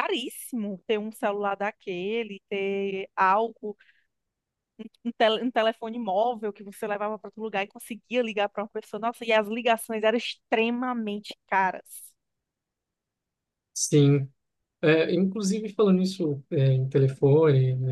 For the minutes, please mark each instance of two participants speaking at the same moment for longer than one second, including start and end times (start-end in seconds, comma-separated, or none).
none